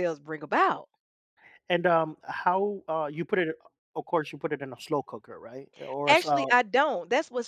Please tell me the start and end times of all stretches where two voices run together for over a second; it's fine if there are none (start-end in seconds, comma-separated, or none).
none